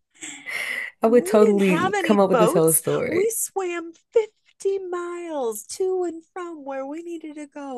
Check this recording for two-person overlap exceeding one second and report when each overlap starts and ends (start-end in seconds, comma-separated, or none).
1.0-3.3